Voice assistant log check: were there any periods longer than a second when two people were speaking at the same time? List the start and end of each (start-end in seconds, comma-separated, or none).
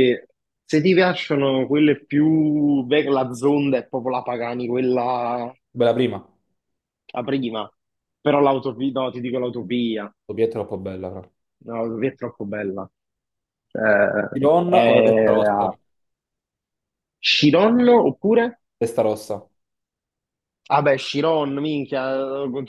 14.3-15.7